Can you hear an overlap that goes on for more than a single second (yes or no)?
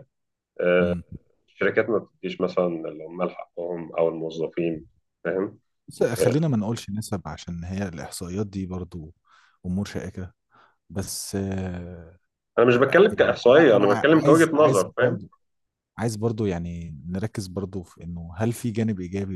yes